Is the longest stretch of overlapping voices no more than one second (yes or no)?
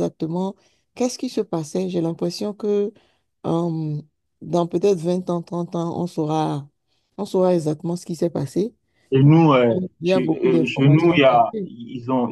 no